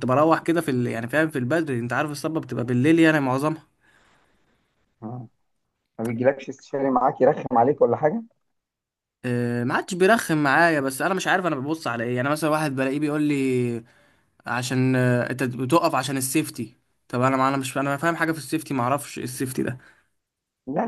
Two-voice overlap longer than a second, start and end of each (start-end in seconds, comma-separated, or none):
none